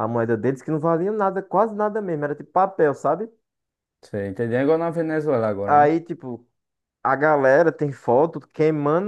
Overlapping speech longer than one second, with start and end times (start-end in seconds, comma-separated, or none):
none